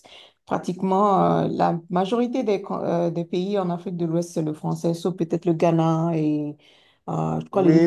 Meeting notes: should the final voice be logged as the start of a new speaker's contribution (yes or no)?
yes